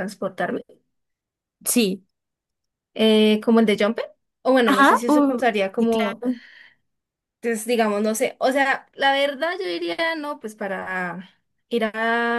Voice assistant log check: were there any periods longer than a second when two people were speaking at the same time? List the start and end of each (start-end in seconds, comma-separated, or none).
4.7-6.2